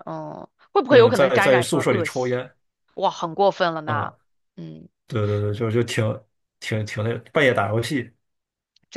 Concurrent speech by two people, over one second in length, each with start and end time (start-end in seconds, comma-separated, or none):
0.9-2.4